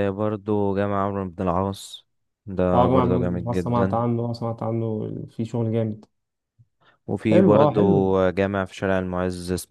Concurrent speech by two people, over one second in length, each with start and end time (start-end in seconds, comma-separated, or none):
2.7-4.0